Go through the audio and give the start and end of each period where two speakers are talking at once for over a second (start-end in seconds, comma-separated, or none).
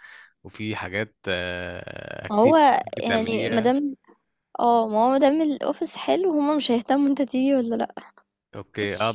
2.3-3.7